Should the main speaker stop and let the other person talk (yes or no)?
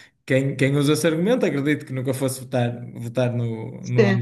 no